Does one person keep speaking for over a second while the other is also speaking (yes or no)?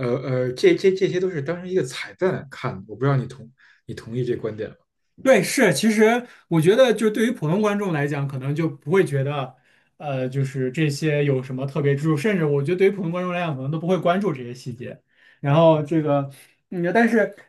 no